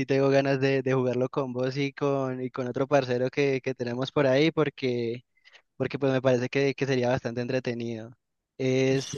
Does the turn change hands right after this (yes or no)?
no